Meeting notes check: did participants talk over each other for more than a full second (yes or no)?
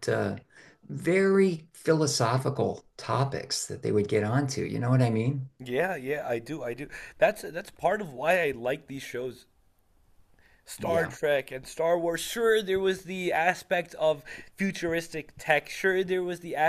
no